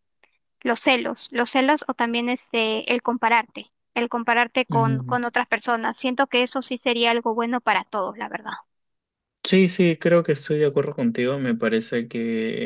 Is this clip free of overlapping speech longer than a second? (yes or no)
yes